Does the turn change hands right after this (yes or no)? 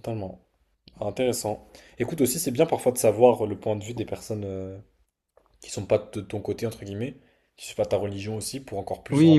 yes